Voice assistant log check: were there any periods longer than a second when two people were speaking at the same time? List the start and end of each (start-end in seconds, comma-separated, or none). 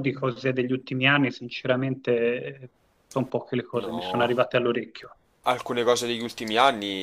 none